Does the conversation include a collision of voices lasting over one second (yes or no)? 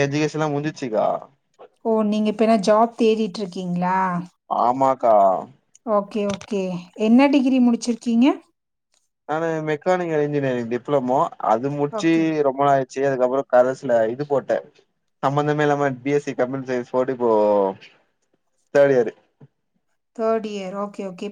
no